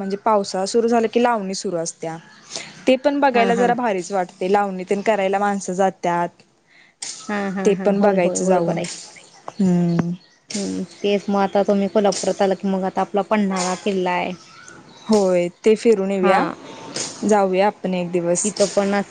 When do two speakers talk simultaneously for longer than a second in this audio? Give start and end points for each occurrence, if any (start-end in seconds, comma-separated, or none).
none